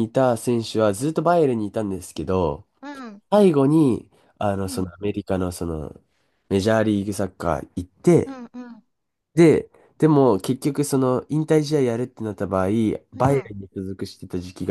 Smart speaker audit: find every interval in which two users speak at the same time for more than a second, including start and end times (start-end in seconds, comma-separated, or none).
none